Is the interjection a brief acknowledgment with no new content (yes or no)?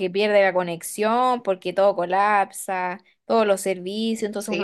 no